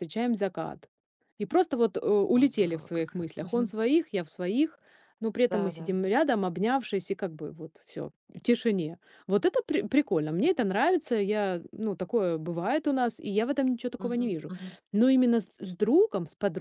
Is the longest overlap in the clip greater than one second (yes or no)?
yes